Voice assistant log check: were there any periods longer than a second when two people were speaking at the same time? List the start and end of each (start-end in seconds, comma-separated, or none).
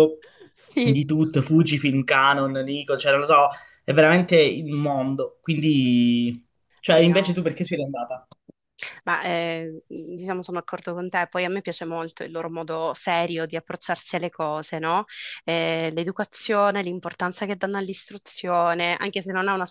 none